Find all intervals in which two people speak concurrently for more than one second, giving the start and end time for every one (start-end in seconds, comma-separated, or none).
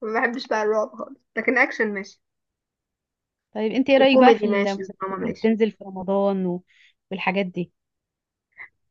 4.0-5.5